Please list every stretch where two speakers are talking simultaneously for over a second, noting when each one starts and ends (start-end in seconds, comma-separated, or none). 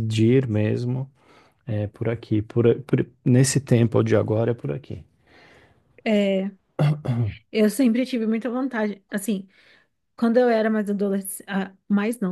none